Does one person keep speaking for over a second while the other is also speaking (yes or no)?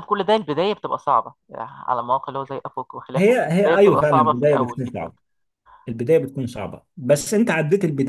yes